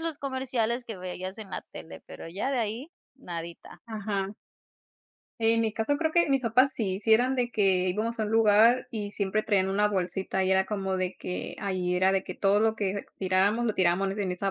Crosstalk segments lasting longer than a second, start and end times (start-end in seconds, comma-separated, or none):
none